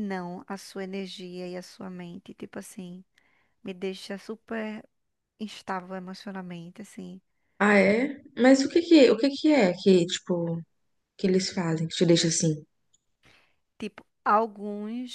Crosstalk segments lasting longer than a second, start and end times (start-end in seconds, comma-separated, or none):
none